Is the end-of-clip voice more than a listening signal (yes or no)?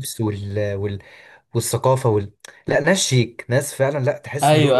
yes